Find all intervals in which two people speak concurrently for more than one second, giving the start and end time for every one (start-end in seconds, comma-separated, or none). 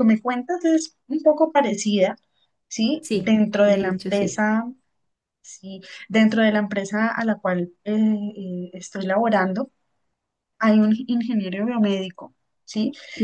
3.0-4.4